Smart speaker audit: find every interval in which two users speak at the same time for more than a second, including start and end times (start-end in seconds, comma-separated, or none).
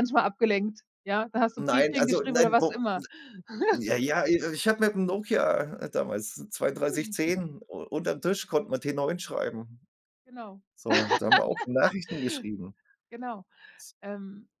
1.6-2.8